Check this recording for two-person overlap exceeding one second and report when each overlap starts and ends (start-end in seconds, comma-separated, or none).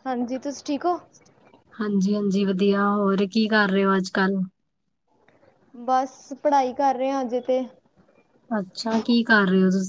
none